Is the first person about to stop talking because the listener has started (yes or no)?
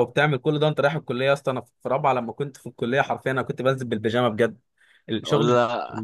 no